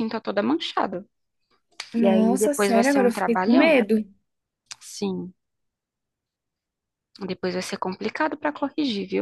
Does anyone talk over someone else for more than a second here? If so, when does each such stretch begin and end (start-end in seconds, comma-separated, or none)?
2.0-3.8